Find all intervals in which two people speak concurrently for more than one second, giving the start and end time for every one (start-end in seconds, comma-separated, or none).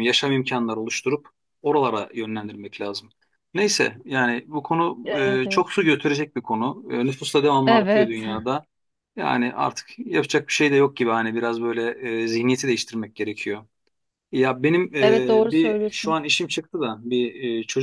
15.0-16.2